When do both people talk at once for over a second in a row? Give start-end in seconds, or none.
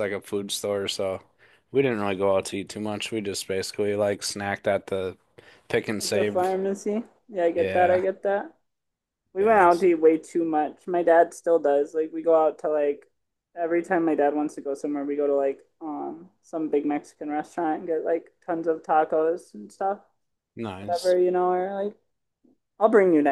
none